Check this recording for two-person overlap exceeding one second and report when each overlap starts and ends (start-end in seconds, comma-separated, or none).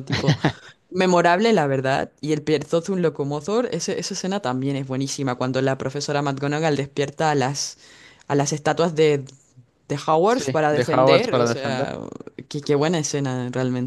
10.3-11.9